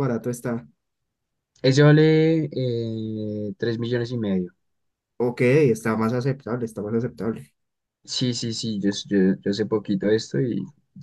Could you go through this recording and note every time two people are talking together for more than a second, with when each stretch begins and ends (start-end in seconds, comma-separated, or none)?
none